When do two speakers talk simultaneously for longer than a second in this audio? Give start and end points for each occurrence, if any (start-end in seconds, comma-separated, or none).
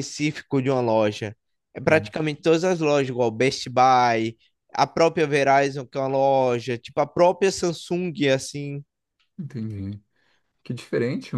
none